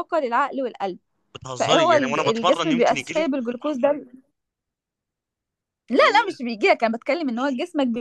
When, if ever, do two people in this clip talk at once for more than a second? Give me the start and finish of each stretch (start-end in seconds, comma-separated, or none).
1.6-3.3